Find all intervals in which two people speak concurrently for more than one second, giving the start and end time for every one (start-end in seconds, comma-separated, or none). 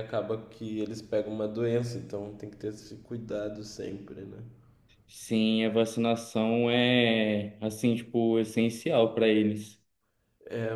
none